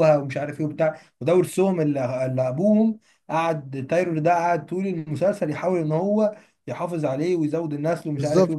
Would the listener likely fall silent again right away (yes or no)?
no